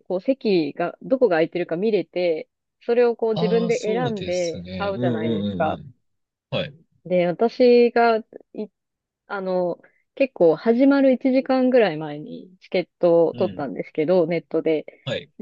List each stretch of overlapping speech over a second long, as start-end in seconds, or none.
3.4-5.8